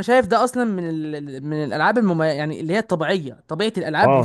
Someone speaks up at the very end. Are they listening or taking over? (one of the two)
taking over